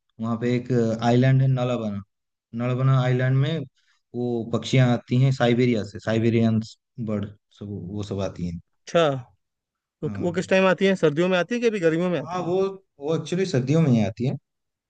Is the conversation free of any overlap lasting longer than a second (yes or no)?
yes